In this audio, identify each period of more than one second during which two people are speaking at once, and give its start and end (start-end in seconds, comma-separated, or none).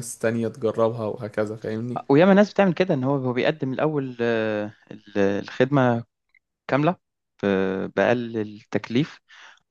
none